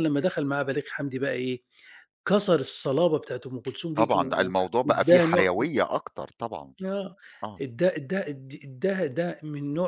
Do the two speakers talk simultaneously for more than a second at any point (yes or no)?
yes